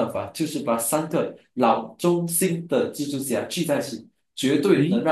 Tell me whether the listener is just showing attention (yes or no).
yes